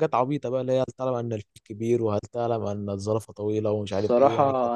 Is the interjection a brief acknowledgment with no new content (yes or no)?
no